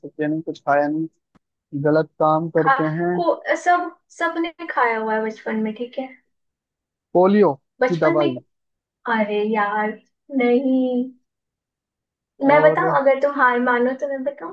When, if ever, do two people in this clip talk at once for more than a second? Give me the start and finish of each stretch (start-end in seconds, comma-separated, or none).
none